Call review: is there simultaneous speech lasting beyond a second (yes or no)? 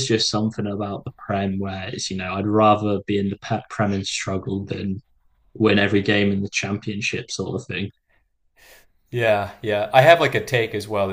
no